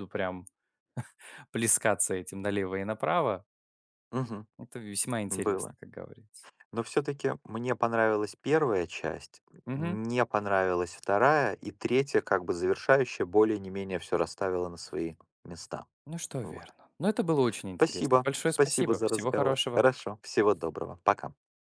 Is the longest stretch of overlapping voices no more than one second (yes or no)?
no